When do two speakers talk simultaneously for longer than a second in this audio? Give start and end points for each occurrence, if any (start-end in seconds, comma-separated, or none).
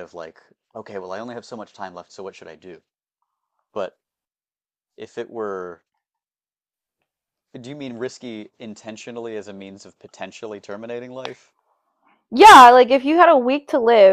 none